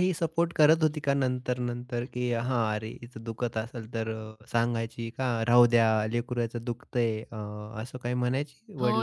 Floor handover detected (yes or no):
yes